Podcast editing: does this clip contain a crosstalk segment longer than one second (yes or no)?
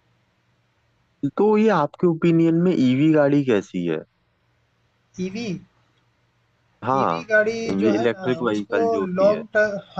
yes